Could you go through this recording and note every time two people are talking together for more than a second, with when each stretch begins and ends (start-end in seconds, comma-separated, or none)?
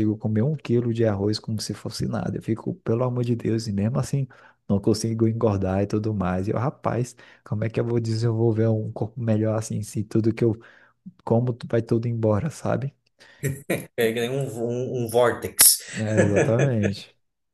none